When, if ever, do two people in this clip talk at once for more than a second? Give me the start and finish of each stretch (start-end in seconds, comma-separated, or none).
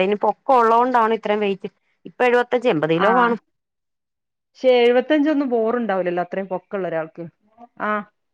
none